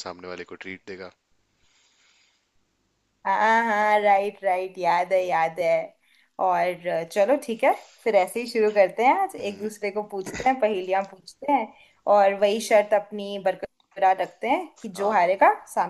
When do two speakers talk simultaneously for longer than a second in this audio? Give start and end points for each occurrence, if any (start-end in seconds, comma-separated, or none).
none